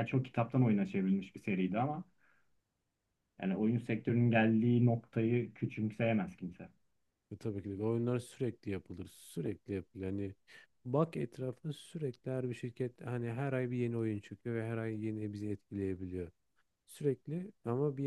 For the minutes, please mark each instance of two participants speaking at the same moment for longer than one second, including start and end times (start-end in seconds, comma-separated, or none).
none